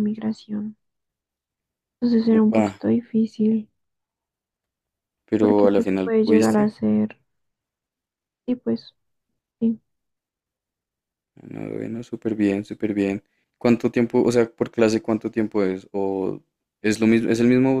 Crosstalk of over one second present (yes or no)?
yes